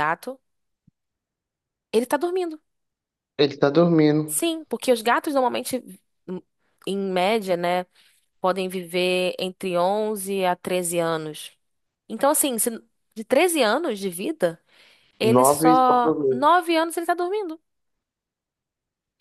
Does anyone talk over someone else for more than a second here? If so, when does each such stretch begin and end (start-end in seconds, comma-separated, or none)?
15.2-16.5